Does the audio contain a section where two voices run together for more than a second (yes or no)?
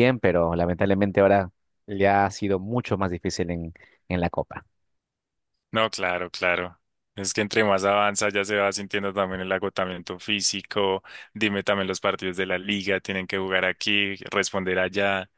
no